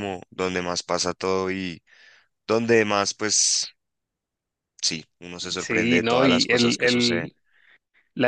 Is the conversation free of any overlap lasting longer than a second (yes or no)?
no